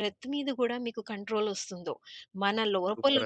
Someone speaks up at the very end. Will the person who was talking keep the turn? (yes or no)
yes